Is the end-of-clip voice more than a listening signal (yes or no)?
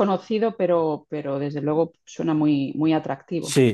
yes